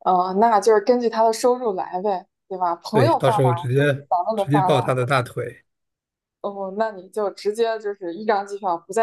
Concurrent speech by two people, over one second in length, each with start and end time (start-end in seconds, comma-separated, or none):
2.9-4.9